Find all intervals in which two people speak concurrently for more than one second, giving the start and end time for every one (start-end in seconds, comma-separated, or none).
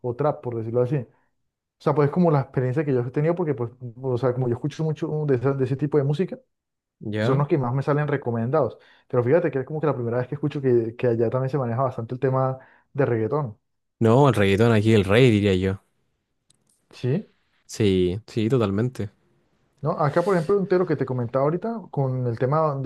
none